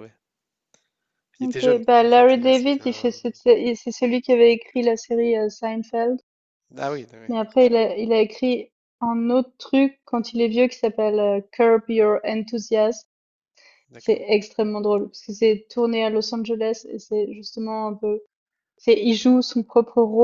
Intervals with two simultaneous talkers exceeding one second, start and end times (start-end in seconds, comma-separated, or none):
1.4-3.1